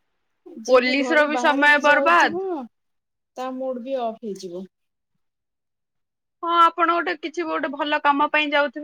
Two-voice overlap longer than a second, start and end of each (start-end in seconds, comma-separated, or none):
0.7-2.4